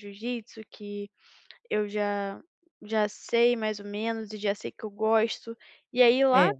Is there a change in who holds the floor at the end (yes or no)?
no